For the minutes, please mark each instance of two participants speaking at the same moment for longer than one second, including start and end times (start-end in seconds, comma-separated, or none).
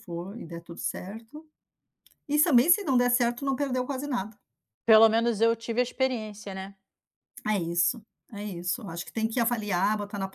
none